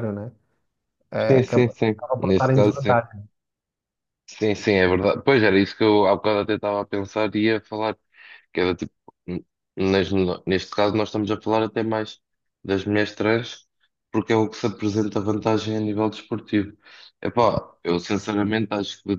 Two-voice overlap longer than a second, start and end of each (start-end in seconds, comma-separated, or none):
1.3-3.0